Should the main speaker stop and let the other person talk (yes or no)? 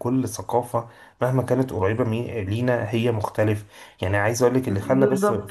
no